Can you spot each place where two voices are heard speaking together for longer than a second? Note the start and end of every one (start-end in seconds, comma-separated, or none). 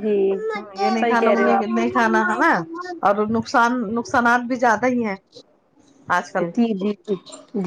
1.0-2.5